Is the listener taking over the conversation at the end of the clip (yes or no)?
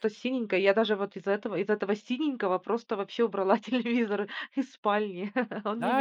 yes